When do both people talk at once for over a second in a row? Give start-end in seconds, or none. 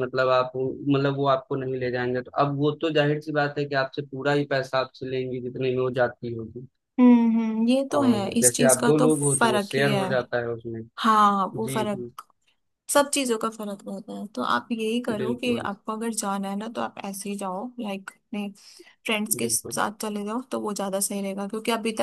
8.0-10.0